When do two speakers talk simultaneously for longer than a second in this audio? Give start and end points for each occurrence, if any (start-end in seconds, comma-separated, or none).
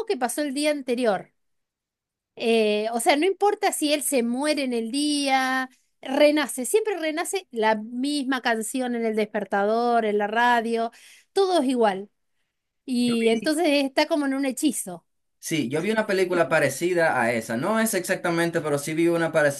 none